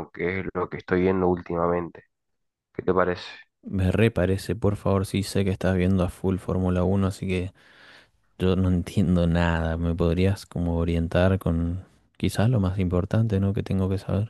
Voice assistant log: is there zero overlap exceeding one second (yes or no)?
yes